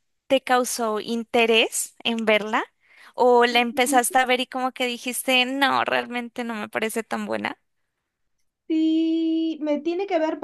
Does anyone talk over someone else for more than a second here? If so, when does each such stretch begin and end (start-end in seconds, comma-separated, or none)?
none